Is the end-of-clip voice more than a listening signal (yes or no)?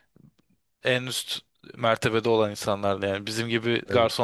no